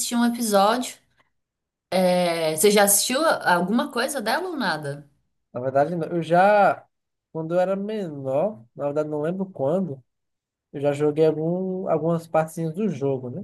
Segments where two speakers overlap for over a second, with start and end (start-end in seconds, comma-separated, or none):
none